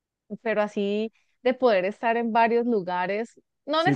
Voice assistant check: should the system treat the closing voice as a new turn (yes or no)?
yes